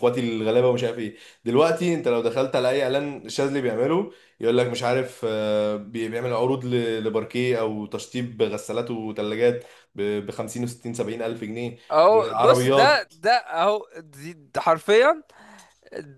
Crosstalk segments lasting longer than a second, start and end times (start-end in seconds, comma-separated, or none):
11.9-13.1